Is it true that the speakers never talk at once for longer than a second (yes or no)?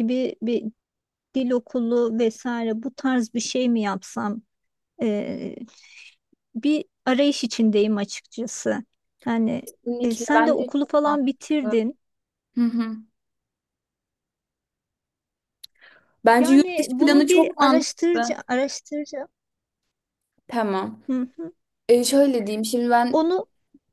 no